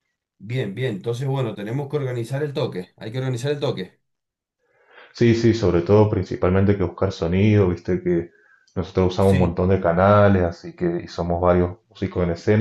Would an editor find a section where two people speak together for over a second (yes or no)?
no